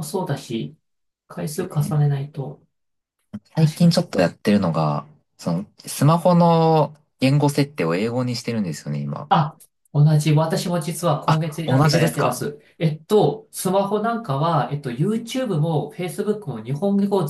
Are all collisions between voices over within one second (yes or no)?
no